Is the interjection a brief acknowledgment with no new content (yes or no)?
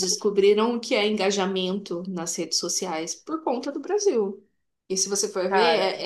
yes